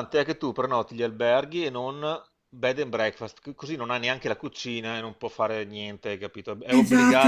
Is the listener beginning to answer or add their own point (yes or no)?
yes